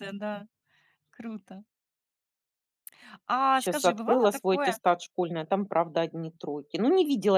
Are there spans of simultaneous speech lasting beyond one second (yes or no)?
yes